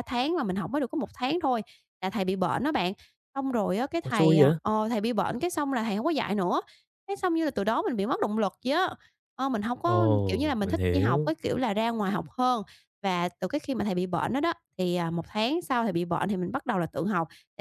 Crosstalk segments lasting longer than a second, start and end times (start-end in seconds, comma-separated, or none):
9.8-11.3